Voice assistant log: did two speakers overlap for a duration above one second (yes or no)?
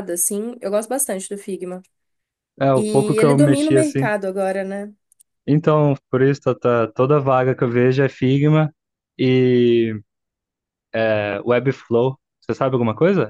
yes